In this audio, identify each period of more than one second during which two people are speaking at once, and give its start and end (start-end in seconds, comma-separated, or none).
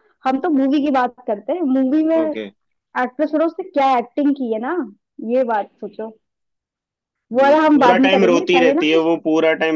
7.4-9.1